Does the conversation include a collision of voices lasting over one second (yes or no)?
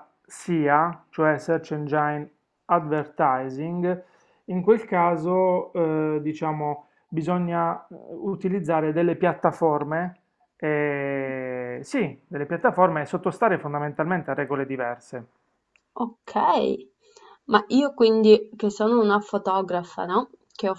no